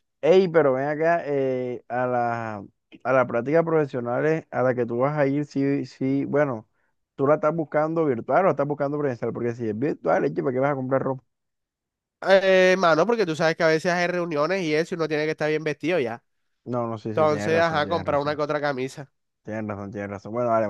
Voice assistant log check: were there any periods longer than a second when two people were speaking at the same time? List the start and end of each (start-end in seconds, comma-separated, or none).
17.1-18.4